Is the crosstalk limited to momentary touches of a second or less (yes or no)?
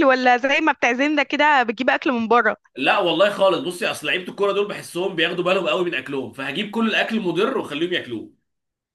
yes